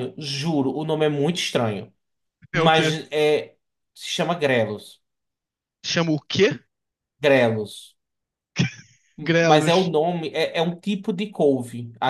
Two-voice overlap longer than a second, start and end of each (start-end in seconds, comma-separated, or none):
none